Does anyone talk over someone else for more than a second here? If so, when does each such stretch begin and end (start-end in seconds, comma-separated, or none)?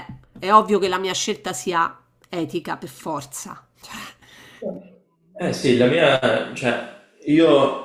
none